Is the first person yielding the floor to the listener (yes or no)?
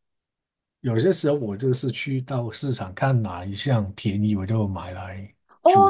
yes